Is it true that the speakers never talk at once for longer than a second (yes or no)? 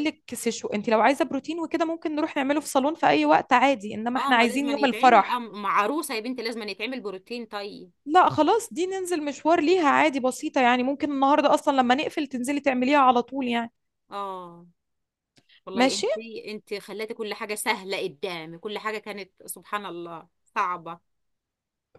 no